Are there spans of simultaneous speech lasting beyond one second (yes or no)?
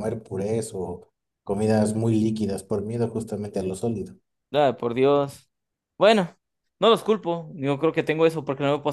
no